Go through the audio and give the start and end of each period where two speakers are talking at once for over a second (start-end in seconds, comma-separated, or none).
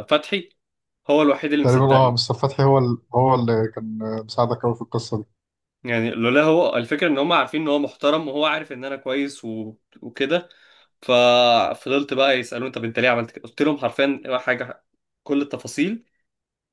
none